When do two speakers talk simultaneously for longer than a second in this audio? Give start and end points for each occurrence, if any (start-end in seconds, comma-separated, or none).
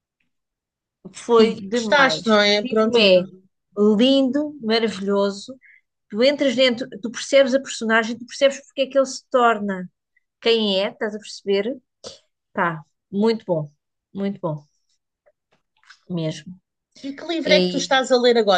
1.4-3.1